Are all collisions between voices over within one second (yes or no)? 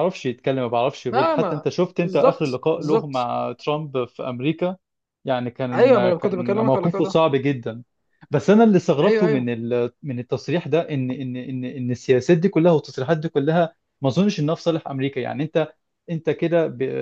no